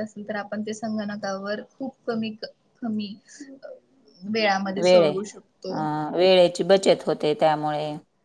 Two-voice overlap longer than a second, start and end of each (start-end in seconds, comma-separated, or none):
none